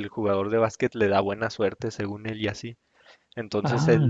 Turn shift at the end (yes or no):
no